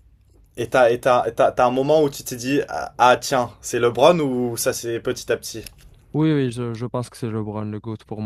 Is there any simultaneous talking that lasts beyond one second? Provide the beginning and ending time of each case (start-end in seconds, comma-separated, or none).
none